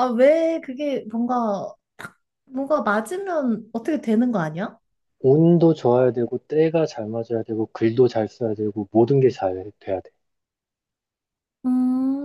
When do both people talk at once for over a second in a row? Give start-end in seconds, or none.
none